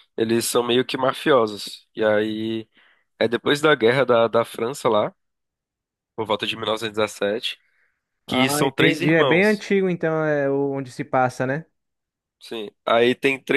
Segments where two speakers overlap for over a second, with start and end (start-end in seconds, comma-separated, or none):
8.3-9.6